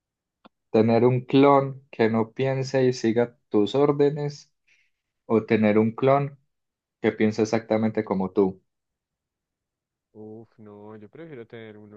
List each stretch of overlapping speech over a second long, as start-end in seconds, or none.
none